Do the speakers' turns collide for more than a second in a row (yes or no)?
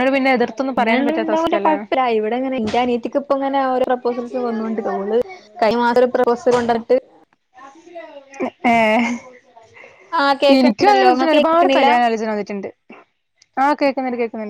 yes